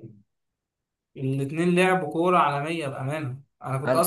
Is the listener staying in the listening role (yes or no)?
yes